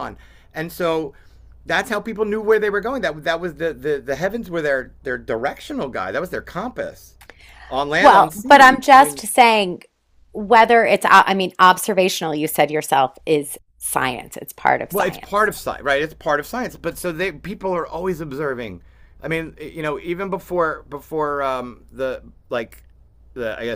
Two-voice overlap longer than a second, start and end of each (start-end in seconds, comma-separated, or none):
8.0-9.2